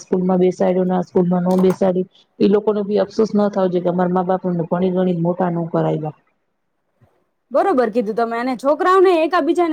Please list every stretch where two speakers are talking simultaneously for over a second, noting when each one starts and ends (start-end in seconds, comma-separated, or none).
none